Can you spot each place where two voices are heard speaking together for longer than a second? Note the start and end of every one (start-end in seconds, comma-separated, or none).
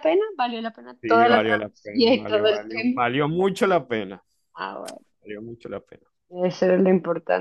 1.0-3.0